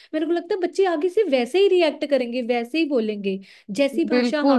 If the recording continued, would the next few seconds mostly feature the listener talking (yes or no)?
yes